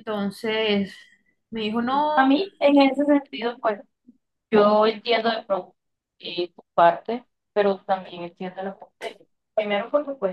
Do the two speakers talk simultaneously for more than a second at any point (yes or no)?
no